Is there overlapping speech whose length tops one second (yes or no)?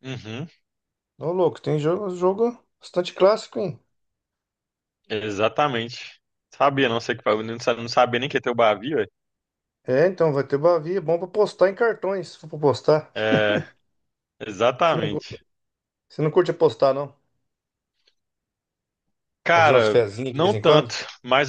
yes